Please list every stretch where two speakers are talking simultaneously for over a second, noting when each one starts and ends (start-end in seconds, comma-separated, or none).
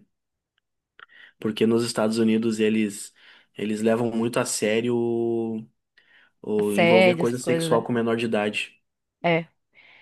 6.5-7.9